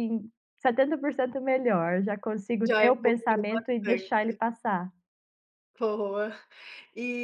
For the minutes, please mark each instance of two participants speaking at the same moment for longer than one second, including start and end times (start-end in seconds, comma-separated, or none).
2.6-4.4